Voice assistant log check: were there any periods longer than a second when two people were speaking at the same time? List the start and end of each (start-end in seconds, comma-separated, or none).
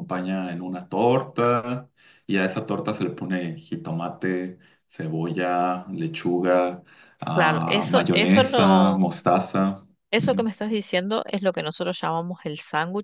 7.3-9.0